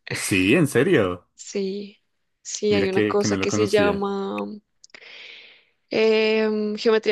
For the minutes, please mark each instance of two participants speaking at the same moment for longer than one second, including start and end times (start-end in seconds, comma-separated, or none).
2.7-4.0